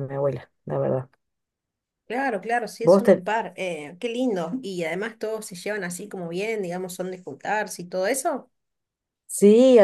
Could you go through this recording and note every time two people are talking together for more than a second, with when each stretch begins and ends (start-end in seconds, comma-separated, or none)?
none